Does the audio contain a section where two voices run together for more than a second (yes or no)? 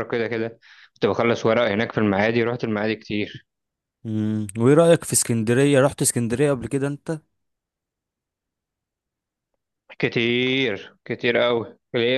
no